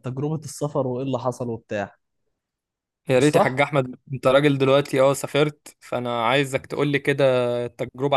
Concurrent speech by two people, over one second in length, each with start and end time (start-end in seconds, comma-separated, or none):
none